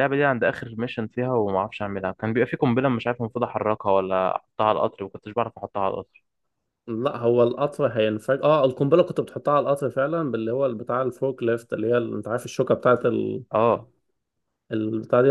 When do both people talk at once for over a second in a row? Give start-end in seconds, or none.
none